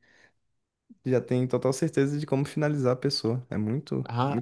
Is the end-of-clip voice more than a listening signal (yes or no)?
yes